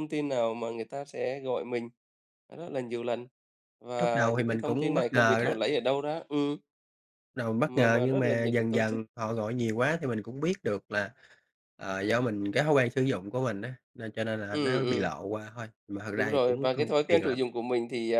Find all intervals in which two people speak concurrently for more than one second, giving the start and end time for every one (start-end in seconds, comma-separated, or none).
4.0-5.5, 7.6-9.0, 16.1-17.4